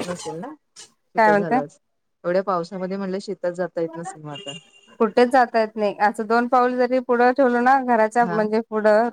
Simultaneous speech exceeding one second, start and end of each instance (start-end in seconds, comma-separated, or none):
none